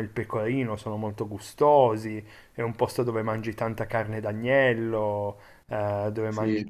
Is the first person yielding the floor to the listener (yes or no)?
no